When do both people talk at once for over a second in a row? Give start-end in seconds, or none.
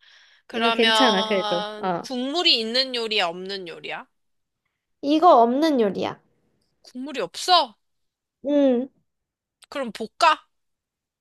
0.5-2.1